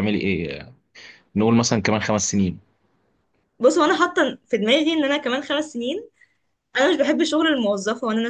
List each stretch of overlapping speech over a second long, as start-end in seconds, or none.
none